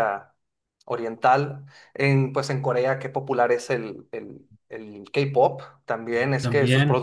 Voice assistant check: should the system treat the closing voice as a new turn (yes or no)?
yes